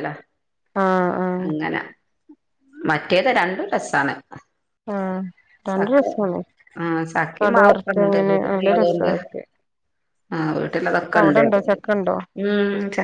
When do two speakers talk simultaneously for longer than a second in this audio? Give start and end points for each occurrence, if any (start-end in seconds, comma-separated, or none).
7.4-9.1